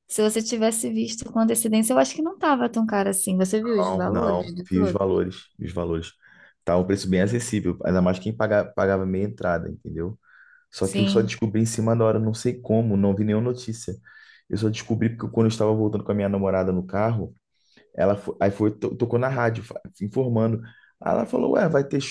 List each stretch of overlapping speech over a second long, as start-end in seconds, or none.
3.8-5.1